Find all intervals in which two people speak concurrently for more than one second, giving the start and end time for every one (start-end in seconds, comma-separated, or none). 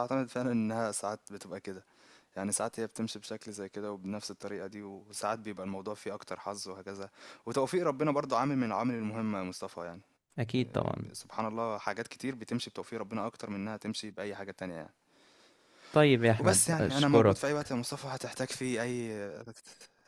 16.4-17.7